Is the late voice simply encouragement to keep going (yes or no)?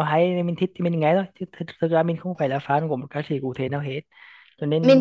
yes